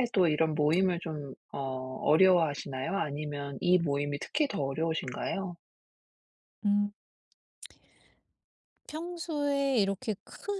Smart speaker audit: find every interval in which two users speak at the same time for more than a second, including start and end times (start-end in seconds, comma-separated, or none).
none